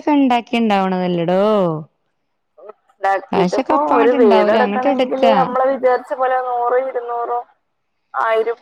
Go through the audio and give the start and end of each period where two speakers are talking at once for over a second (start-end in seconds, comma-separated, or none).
3.9-5.4